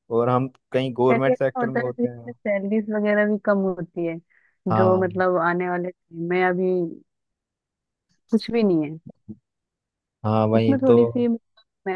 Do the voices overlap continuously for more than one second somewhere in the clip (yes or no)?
yes